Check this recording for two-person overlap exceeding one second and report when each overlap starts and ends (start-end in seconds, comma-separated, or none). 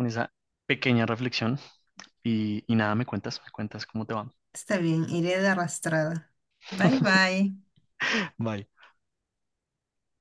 none